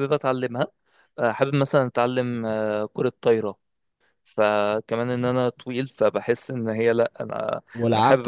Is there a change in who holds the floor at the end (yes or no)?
yes